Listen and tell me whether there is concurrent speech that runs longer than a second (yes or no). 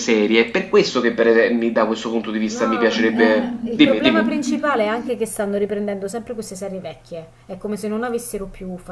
yes